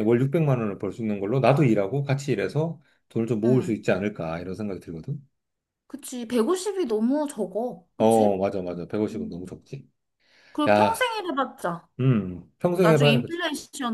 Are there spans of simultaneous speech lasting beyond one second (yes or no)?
no